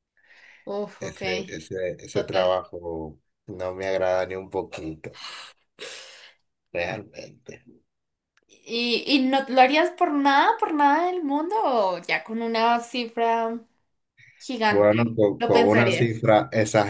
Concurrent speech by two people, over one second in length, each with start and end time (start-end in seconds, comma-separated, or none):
14.7-16.2